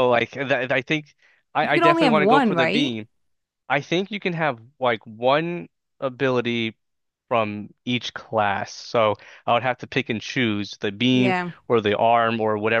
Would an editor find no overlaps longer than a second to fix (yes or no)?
no